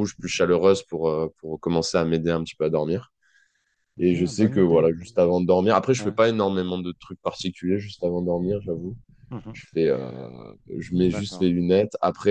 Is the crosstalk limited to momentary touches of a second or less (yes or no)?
no